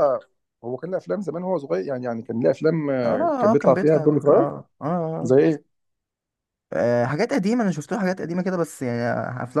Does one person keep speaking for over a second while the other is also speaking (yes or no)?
yes